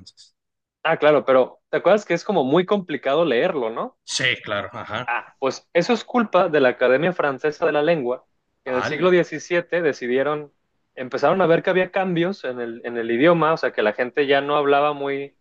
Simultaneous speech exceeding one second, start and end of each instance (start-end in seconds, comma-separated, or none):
none